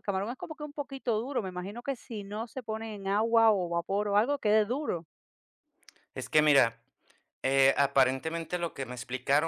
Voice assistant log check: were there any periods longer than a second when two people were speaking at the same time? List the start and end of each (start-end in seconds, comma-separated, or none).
none